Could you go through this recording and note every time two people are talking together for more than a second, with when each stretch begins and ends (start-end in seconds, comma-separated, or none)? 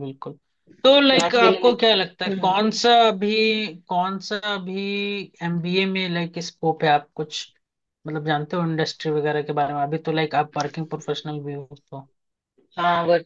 0.9-2.5